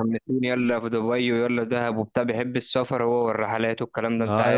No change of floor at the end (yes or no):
no